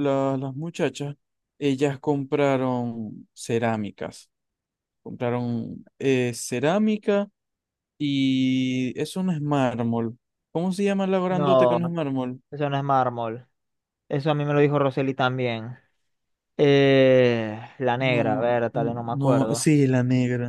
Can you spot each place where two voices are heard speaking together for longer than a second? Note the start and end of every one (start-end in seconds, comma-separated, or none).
18.0-19.7